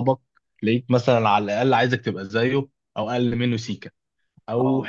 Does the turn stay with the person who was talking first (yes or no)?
yes